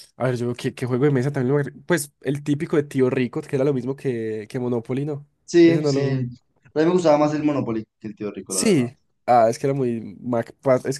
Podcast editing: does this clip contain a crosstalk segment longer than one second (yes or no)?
no